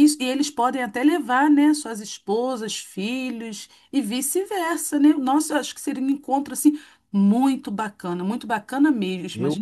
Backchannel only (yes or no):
no